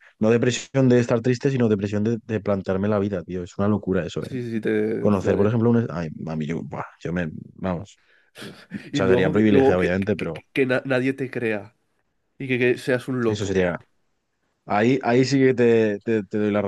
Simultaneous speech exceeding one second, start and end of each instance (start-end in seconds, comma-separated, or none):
8.9-10.4